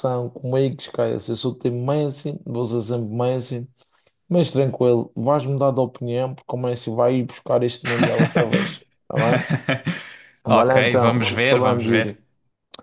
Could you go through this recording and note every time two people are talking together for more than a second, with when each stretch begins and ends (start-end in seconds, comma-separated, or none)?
10.5-12.1